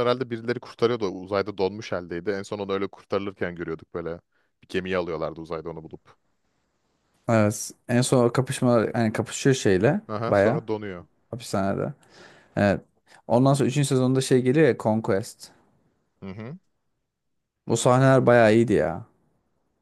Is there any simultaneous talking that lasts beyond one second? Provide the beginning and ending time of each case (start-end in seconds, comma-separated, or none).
none